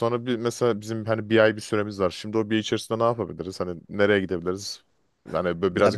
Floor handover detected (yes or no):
no